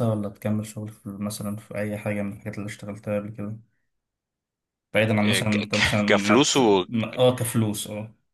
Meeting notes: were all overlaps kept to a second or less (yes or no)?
no